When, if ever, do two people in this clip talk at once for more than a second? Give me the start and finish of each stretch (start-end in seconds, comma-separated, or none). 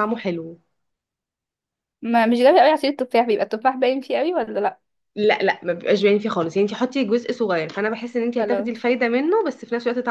none